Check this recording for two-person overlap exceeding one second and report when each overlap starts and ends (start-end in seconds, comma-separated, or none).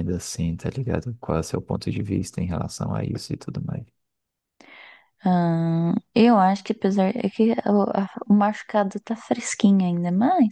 none